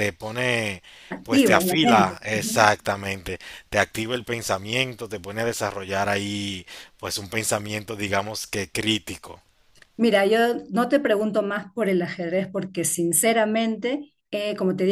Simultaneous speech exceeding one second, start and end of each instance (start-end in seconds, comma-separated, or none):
1.2-2.7